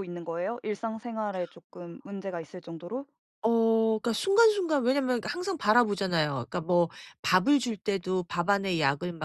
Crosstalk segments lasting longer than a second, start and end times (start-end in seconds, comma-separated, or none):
none